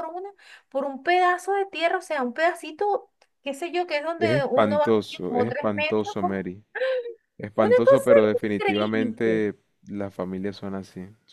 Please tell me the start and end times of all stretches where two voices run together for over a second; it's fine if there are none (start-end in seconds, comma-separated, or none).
4.2-6.2, 7.5-9.4